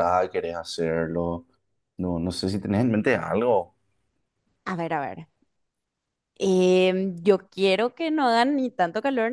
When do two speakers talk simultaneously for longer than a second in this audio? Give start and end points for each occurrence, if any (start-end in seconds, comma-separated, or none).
none